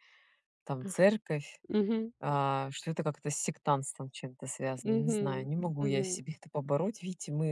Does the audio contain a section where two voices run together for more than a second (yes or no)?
yes